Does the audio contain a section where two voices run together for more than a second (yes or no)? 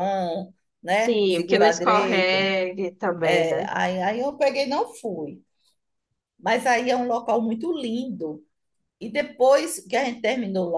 yes